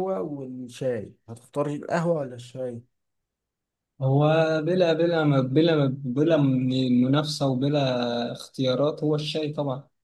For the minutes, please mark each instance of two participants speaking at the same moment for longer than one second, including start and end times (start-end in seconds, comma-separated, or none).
none